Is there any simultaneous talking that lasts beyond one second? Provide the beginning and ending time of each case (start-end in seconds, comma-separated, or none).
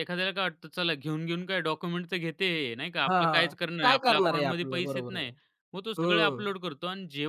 3.1-5.3